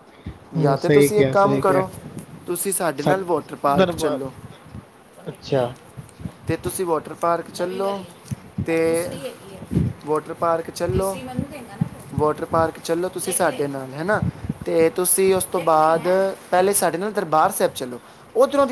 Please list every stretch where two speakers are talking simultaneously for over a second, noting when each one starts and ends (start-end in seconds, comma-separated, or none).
0.6-1.8